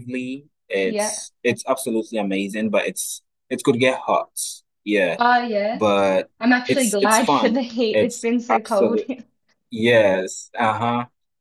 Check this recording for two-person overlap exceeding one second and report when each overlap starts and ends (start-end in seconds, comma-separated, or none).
6.7-9.1